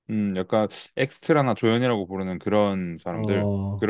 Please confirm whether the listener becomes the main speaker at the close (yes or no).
yes